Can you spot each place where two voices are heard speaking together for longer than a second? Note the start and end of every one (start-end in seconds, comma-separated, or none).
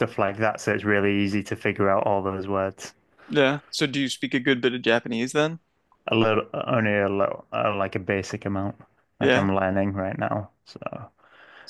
none